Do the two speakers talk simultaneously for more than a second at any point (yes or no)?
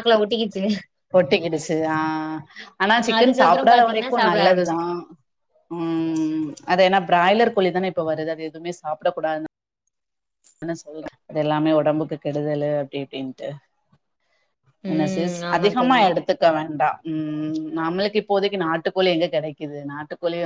yes